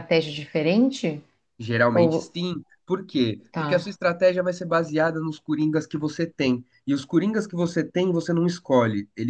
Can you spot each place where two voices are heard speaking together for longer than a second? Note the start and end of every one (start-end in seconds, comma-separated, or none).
none